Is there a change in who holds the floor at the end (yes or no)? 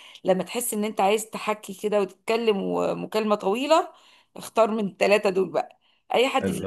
no